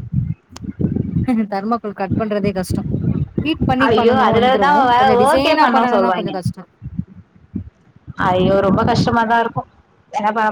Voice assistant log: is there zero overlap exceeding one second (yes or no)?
no